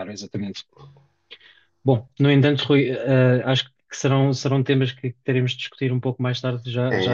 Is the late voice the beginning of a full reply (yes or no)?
yes